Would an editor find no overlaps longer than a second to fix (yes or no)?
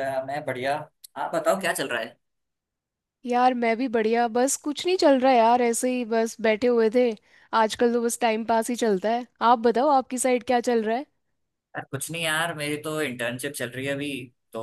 yes